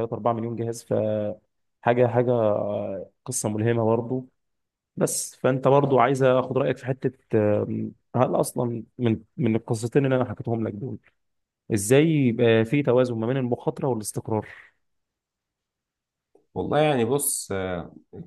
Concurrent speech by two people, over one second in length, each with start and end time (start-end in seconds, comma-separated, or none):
none